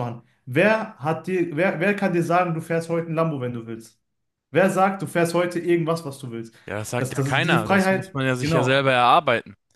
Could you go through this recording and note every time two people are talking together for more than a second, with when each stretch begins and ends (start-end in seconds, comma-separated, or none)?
7.0-8.8